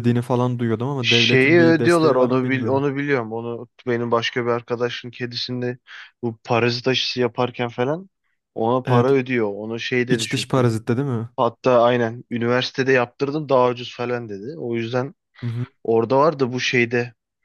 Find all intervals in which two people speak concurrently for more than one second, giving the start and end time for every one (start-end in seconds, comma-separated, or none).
1.0-2.8